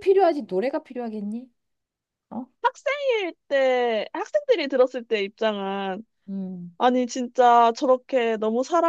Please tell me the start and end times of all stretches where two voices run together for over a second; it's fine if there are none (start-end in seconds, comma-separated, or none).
none